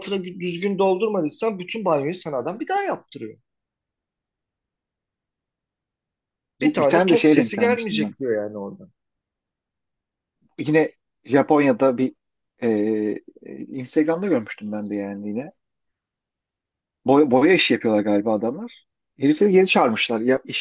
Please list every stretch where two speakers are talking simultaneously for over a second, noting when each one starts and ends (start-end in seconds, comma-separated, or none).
6.6-8.1